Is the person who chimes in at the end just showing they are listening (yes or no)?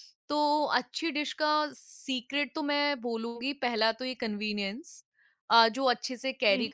yes